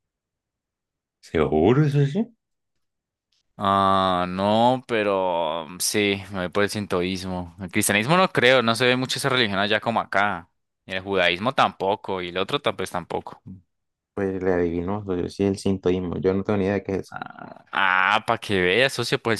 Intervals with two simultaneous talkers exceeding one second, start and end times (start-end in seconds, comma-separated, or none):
none